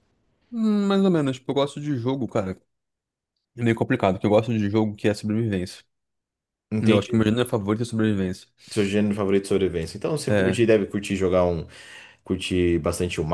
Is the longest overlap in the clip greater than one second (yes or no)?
no